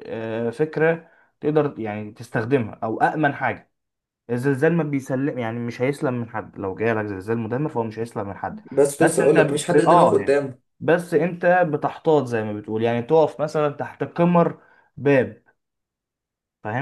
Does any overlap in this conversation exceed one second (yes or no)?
yes